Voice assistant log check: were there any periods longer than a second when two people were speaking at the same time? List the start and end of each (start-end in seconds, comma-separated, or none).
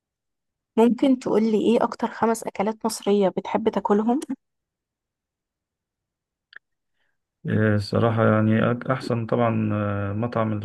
none